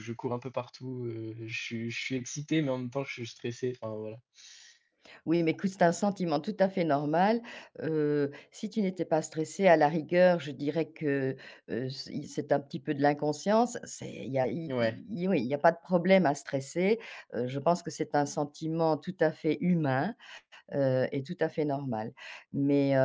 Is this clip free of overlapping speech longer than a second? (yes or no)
yes